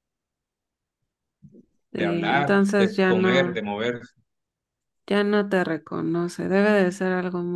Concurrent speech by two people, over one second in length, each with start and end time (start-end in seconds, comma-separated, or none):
1.9-3.6